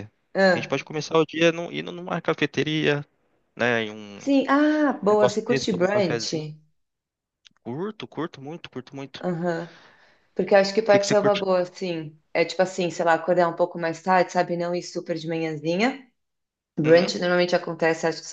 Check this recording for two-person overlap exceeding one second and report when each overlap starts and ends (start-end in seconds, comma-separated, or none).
5.1-6.3